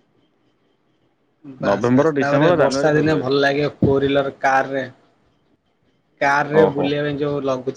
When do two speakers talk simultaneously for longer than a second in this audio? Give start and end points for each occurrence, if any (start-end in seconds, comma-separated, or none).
1.7-3.3